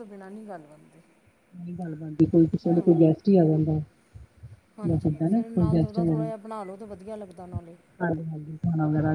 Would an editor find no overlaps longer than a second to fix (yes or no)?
no